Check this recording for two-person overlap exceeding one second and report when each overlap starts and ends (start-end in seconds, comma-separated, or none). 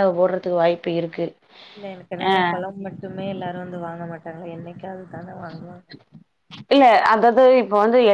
none